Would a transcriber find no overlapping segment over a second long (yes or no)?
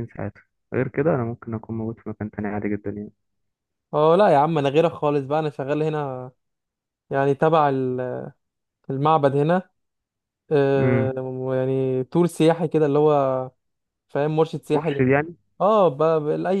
yes